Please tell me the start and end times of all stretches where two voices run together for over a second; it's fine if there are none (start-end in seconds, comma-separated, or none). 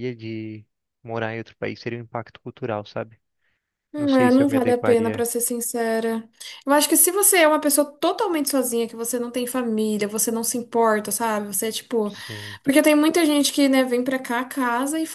4.0-5.3